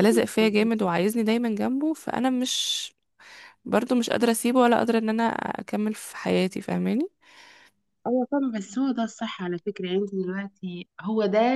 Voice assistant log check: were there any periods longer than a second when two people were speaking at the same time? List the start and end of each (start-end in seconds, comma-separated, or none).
none